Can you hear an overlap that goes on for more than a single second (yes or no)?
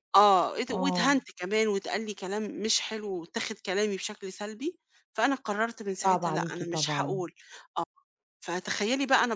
yes